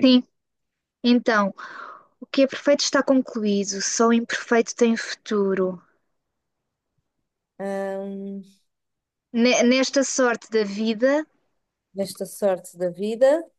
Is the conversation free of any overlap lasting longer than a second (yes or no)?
yes